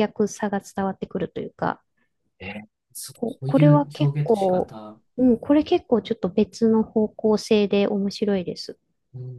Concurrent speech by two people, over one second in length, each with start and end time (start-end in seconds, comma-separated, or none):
3.1-4.8